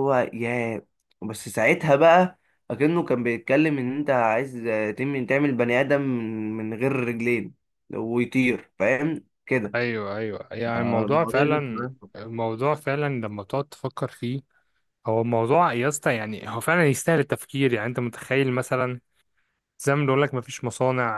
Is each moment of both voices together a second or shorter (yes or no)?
no